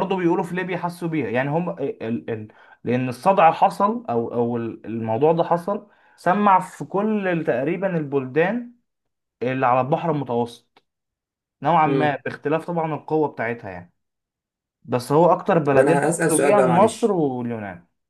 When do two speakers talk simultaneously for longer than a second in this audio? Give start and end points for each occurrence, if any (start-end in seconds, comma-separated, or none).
15.7-17.2